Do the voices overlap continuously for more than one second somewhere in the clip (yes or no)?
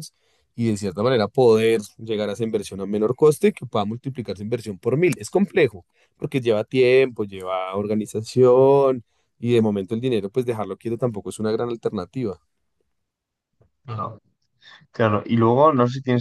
no